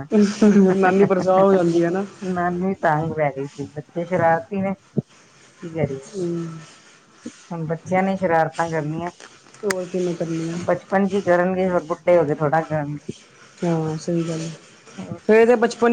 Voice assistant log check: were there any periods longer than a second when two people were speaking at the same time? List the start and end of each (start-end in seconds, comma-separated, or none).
none